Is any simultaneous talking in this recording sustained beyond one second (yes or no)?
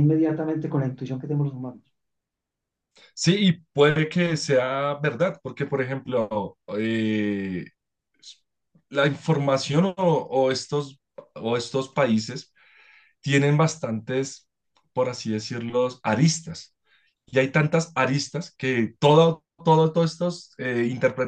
no